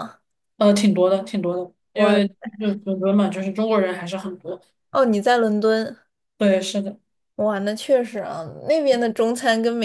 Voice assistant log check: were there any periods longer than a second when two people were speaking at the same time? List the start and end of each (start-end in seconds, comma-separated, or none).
none